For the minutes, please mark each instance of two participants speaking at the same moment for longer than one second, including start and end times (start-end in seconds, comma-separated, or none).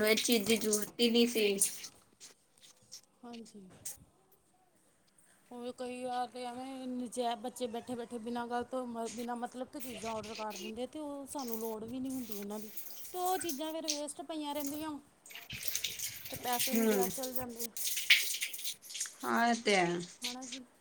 none